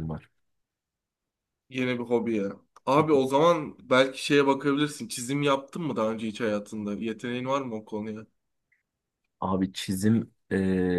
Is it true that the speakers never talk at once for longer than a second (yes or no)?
yes